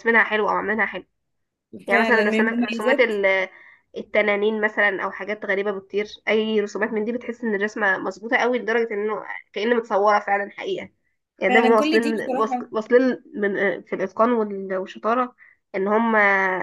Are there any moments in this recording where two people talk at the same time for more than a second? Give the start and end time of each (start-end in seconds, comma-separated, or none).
1.9-3.1, 11.5-12.7